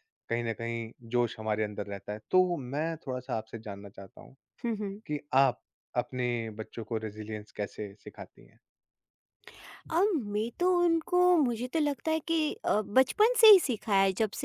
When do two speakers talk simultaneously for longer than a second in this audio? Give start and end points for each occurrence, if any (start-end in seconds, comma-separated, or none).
none